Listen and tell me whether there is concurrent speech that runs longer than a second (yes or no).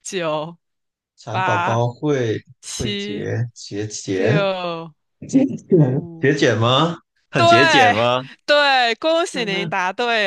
no